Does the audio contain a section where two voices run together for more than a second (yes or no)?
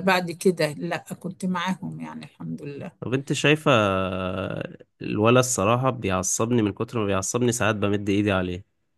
no